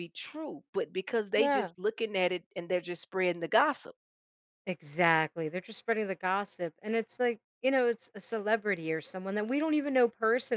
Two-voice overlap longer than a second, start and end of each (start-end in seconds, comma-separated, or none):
none